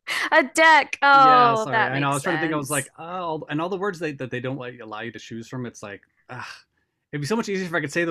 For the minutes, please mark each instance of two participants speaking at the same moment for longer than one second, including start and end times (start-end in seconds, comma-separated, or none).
1.1-2.9